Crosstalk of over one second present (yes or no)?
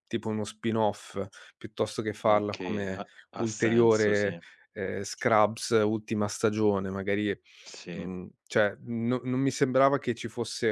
yes